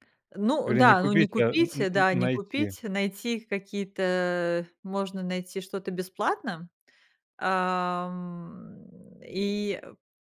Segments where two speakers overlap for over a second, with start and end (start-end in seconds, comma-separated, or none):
0.7-2.8